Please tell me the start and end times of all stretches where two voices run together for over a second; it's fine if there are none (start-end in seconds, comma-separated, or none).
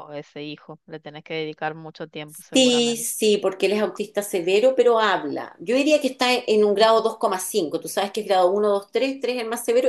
none